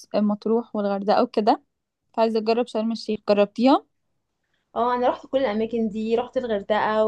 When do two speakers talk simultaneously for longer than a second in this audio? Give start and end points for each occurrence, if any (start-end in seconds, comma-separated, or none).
none